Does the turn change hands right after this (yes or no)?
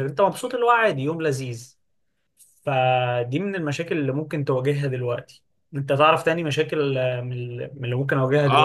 yes